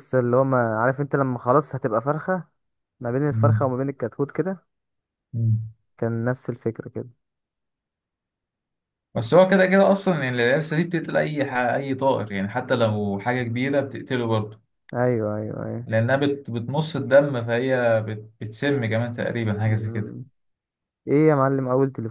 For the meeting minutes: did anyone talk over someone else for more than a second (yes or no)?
no